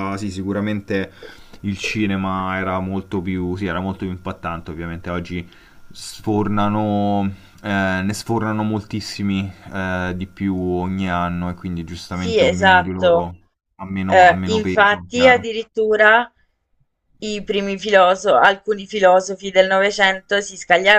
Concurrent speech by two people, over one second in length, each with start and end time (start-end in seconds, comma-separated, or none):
12.1-13.3, 14.1-15.4